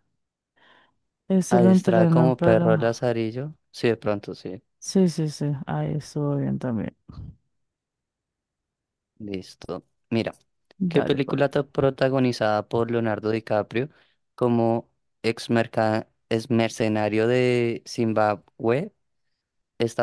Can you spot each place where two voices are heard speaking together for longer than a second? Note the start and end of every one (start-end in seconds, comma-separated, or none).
1.5-3.0